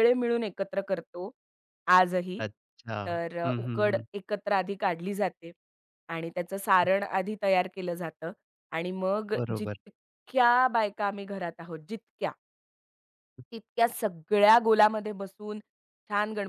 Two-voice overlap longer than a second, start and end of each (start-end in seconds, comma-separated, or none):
none